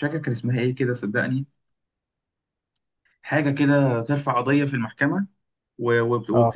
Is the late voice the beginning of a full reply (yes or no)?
no